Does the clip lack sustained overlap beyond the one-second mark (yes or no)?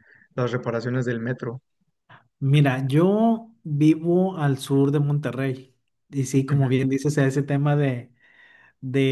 yes